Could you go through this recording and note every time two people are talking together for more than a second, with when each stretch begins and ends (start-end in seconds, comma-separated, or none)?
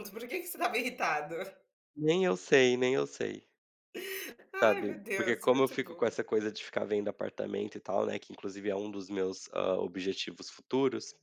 4.6-6.2